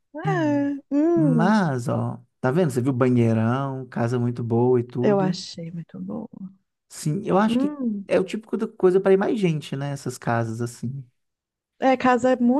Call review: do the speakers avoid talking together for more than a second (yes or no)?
yes